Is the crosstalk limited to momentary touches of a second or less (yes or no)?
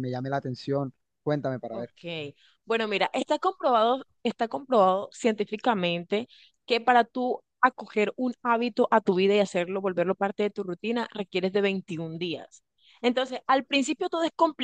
yes